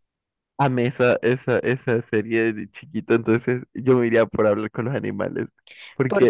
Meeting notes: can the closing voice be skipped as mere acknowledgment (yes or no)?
yes